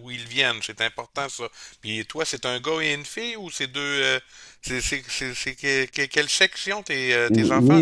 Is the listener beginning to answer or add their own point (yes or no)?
yes